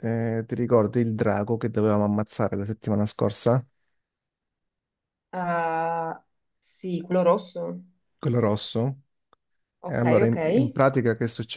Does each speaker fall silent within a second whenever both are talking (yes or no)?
yes